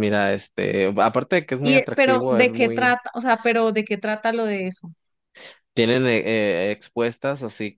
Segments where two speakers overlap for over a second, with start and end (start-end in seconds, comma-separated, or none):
1.6-3.0